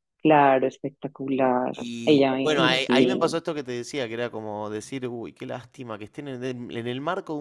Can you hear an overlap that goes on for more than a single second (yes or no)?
yes